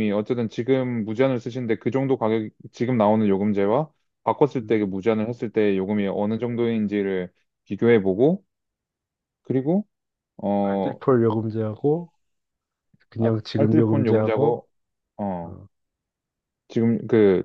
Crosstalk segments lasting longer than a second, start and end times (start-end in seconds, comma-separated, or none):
13.2-14.6